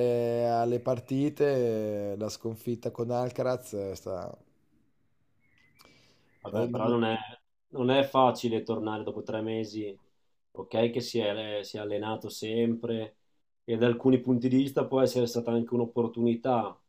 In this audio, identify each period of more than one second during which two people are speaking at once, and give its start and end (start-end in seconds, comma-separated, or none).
none